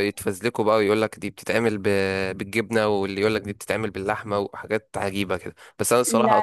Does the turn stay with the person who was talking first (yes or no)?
yes